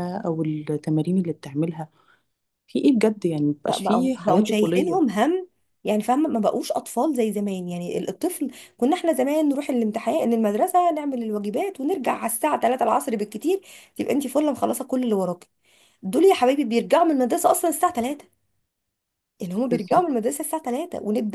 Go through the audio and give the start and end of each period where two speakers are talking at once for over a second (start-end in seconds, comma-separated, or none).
3.7-5.0